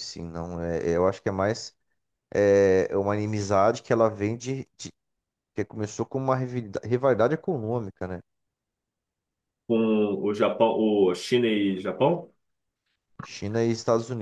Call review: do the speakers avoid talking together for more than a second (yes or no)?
yes